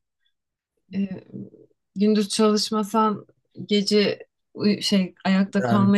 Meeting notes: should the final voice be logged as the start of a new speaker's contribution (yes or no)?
no